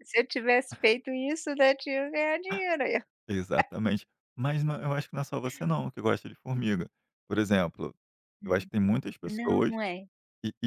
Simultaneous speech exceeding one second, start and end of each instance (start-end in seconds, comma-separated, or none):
none